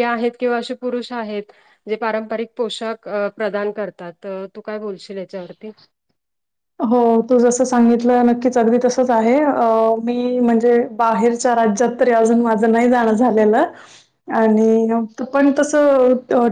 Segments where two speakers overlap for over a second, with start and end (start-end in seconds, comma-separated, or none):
none